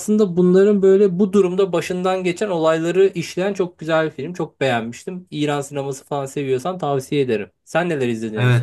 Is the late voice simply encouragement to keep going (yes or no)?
no